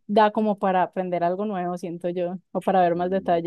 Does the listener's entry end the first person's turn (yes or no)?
yes